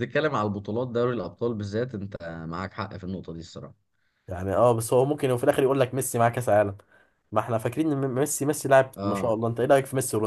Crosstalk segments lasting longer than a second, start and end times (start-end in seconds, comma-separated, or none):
none